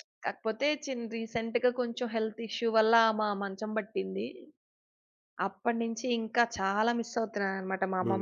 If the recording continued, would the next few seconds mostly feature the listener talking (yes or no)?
yes